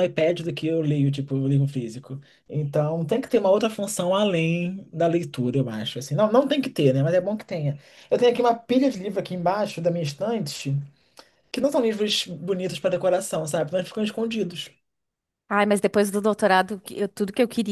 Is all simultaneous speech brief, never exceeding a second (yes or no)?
yes